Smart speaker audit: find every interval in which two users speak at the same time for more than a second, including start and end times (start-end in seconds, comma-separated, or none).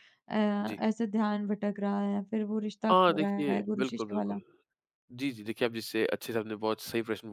2.9-4.4